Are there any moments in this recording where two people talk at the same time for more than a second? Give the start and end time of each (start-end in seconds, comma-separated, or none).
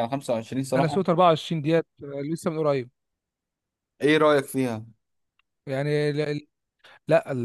none